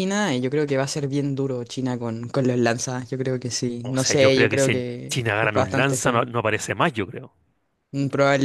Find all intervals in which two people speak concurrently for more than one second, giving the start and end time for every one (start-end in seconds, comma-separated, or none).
3.8-6.3